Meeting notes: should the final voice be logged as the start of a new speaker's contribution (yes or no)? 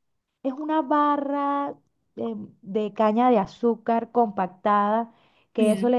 no